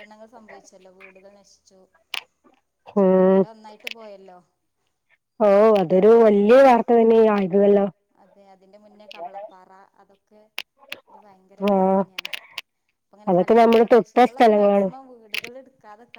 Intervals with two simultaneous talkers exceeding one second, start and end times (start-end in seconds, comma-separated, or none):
13.3-14.9